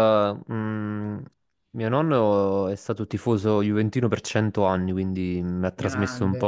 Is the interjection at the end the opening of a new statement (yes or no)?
no